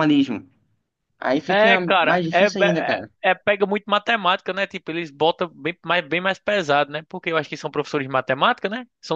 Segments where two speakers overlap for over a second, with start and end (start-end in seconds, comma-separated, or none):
1.5-3.1